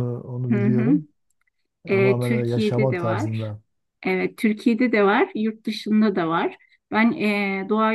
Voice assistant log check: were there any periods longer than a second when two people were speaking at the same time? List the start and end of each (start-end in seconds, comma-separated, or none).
1.9-3.5